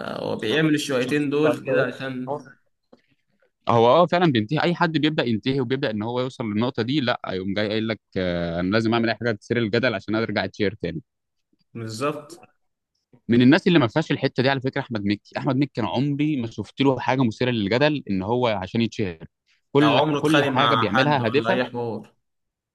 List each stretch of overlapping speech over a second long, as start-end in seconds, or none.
19.8-21.6